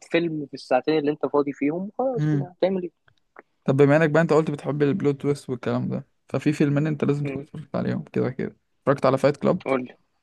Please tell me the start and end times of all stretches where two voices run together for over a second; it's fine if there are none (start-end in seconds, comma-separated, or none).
none